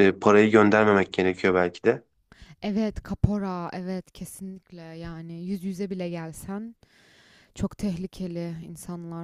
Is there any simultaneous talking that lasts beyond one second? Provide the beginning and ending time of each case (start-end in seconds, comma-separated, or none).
none